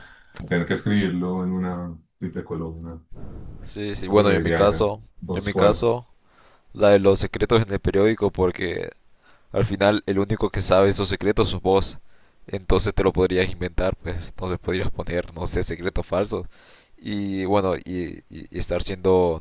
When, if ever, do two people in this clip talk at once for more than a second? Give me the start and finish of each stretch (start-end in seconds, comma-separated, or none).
4.1-5.9